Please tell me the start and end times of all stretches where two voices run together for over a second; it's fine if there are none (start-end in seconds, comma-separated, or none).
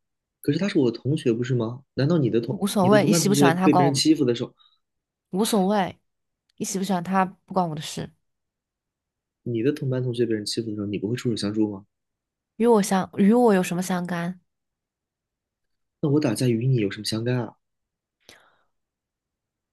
2.5-4.0